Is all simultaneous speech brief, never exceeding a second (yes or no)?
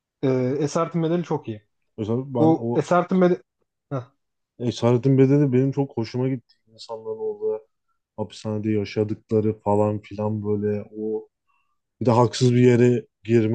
yes